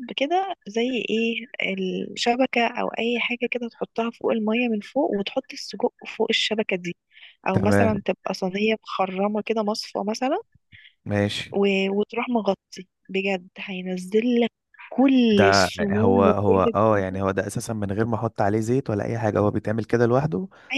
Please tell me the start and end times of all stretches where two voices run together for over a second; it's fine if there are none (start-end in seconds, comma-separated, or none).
15.3-17.2